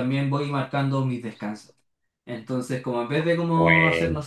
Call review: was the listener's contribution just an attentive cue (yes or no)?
yes